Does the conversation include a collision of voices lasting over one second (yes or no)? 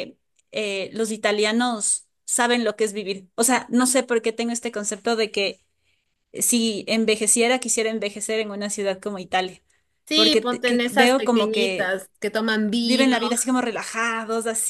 yes